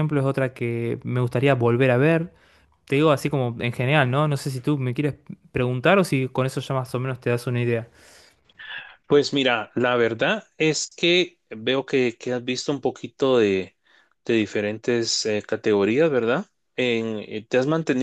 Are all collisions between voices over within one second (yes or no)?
yes